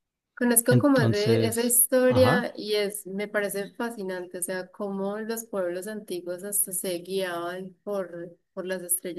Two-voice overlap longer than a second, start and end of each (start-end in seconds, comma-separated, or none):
0.7-2.5